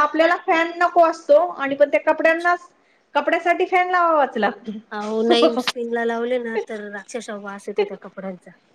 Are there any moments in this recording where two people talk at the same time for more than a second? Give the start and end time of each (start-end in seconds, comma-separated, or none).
none